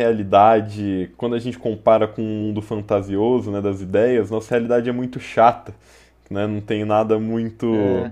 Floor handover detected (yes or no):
no